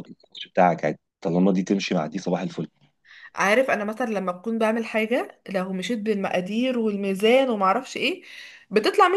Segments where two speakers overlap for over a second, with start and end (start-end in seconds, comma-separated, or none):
none